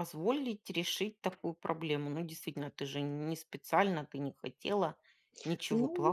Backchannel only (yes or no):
no